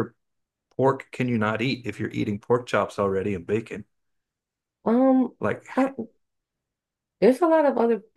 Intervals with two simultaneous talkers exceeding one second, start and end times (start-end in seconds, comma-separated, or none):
none